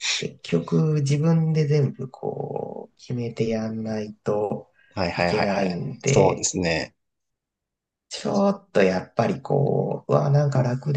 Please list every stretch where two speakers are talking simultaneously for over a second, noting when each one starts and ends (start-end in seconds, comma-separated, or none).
5.1-6.5